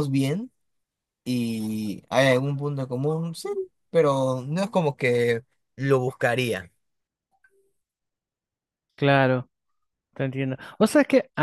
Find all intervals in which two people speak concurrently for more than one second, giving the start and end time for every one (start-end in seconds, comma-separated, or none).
none